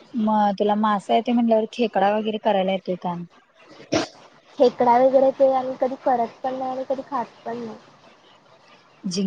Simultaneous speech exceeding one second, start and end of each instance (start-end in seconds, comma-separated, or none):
none